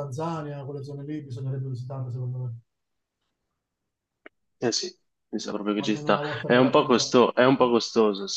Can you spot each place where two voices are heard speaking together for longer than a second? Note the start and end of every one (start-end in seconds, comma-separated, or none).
5.8-7.1